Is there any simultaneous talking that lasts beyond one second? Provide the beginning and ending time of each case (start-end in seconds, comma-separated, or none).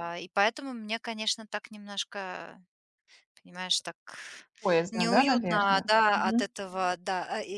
4.9-6.5